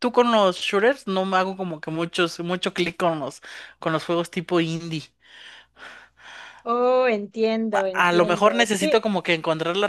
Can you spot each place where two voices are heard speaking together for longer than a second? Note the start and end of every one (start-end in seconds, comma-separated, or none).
7.7-9.0